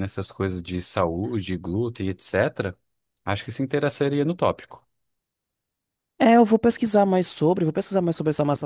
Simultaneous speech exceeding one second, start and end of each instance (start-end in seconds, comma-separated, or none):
none